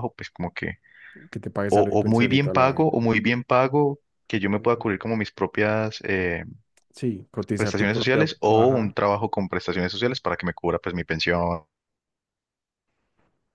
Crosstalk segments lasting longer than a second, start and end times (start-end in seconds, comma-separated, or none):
1.7-3.0, 7.5-8.9